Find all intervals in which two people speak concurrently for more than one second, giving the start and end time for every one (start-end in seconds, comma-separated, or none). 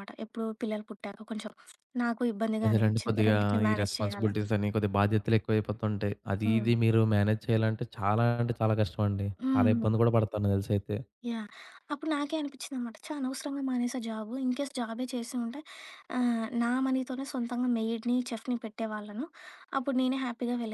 2.6-4.5